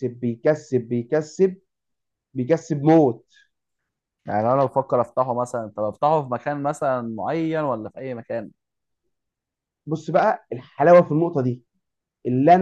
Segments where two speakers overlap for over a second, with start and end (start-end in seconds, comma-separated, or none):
none